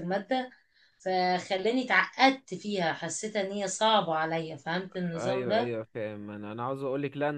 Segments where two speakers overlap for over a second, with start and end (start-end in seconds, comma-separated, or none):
none